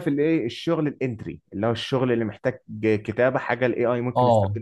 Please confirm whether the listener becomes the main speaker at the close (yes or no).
yes